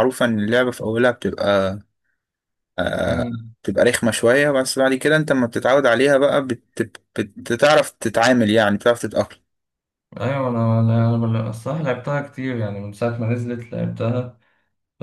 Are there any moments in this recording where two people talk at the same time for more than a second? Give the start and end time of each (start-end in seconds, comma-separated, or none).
none